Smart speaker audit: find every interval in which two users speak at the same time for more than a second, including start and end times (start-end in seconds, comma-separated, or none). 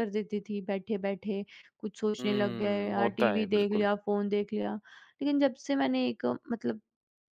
2.2-3.9